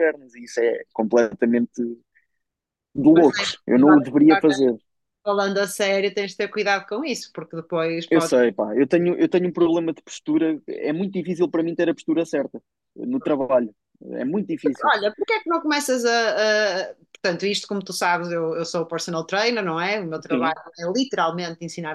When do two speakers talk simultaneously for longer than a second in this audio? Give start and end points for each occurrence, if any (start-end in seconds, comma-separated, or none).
3.1-4.6